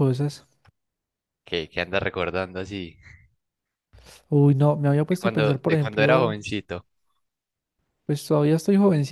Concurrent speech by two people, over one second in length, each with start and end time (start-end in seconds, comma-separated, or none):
5.1-6.4